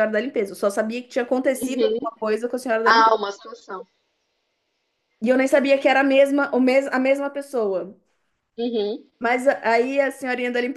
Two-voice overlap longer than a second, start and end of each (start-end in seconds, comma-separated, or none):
none